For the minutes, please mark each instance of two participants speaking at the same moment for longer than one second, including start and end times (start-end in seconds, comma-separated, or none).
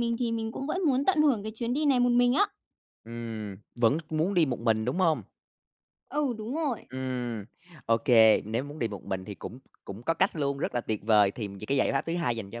none